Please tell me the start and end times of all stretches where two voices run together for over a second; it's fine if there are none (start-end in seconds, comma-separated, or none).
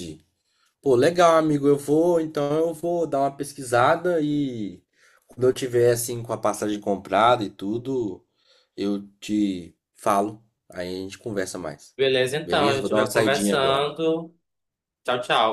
12.4-13.9